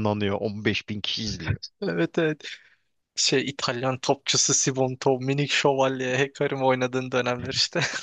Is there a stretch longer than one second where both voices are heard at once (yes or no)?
no